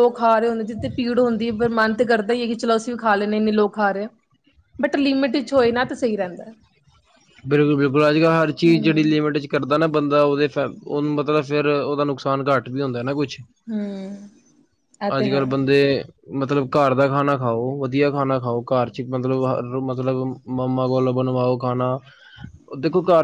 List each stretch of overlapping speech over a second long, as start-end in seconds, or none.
none